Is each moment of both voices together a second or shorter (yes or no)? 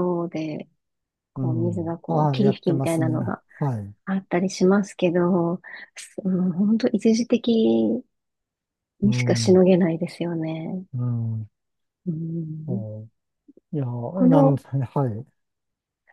no